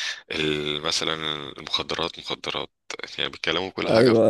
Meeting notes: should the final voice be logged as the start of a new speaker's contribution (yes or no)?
yes